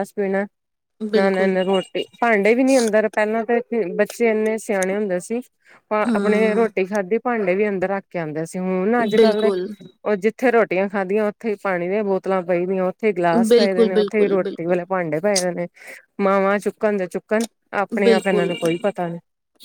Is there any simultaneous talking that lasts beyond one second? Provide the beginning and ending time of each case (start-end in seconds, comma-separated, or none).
13.5-14.8